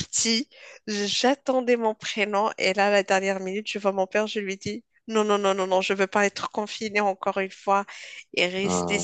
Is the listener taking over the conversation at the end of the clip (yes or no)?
no